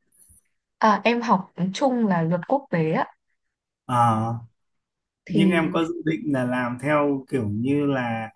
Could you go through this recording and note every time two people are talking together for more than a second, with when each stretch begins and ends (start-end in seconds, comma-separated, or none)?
none